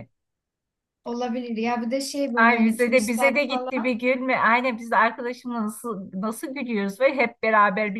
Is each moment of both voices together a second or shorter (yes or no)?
no